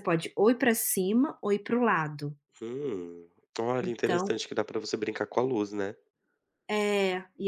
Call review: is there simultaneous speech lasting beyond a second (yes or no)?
no